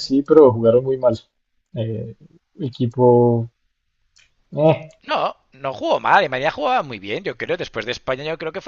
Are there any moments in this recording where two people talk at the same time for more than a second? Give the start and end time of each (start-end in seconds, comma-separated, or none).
none